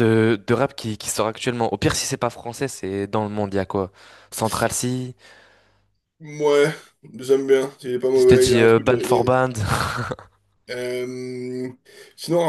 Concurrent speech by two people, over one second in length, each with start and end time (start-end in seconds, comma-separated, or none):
8.2-9.4